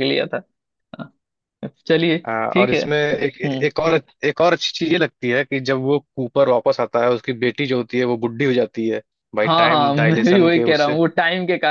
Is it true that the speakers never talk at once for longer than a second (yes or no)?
no